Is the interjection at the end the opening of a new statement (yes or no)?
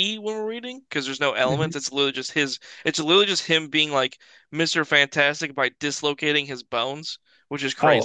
yes